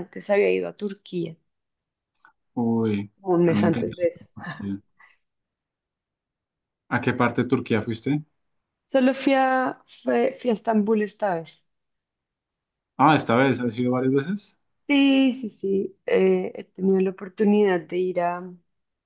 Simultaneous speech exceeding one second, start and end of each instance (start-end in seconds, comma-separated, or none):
none